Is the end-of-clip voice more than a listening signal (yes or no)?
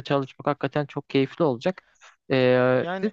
yes